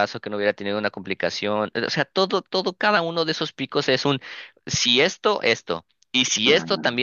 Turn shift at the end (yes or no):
no